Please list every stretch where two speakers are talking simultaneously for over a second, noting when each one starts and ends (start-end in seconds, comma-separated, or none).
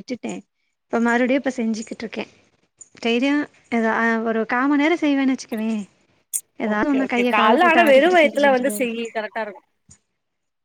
6.7-9.0